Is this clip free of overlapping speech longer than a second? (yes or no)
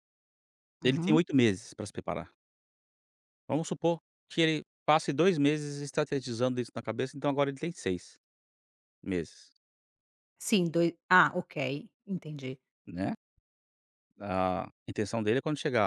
yes